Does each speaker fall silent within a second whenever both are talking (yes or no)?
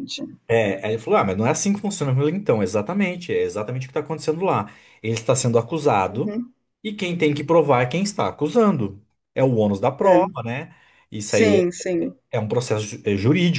yes